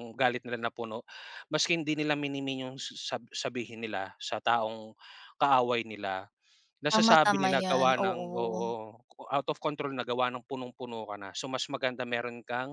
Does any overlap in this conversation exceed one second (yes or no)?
yes